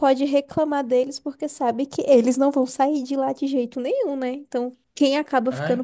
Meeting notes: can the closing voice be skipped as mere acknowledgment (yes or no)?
yes